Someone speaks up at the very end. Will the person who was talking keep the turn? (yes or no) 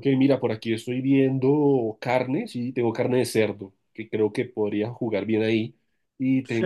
no